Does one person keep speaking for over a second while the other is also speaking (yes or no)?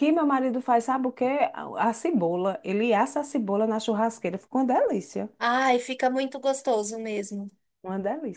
no